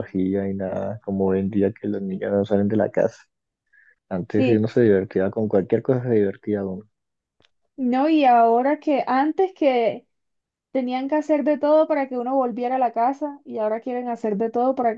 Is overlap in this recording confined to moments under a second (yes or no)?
yes